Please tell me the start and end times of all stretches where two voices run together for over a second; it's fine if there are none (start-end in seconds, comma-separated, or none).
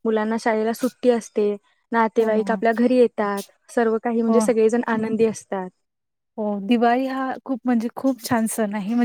none